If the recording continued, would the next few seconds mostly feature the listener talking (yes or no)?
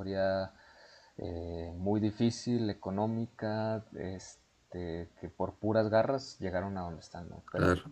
yes